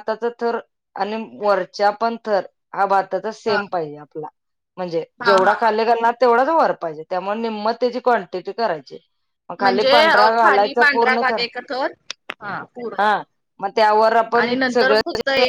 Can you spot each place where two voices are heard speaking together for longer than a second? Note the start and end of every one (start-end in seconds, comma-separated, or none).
9.6-11.4